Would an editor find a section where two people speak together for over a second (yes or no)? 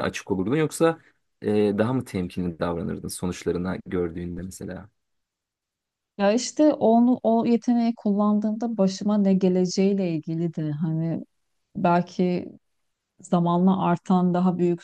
no